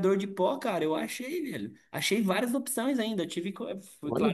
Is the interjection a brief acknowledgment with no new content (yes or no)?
yes